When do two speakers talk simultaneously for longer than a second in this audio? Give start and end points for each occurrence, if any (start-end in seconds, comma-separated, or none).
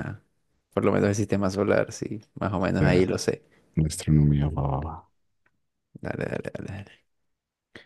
none